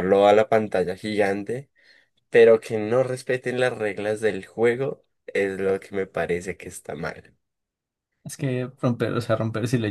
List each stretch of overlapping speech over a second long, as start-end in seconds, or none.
none